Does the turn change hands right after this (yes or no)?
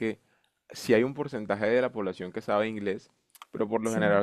no